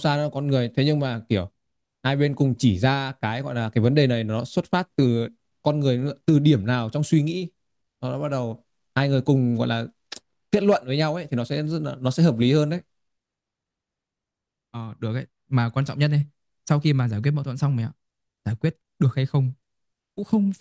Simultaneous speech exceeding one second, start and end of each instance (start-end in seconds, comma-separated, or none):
none